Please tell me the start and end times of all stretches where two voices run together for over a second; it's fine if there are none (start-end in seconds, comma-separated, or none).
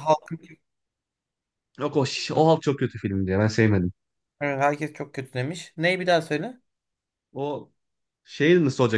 none